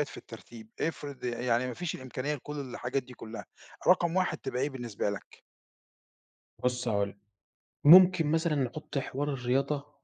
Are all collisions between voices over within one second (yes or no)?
yes